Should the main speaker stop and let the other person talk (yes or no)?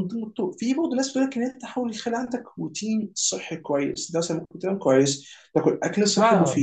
no